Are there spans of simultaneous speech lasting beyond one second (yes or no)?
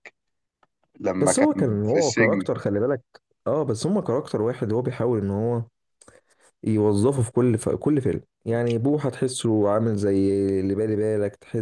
yes